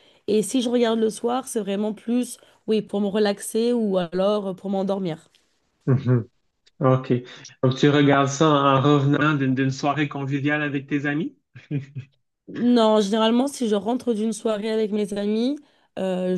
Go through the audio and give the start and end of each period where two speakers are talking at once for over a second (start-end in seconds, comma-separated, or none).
none